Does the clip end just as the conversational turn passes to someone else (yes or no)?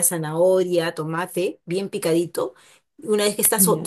no